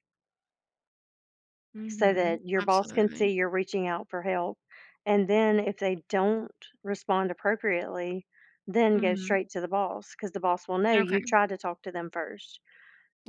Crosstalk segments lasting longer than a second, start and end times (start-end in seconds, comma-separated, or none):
1.9-3.3